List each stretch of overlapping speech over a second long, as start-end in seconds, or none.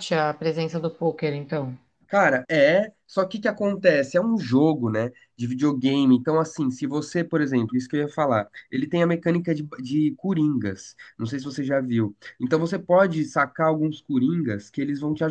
none